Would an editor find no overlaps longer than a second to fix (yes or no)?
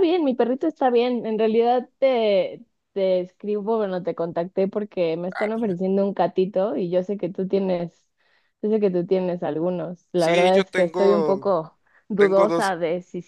no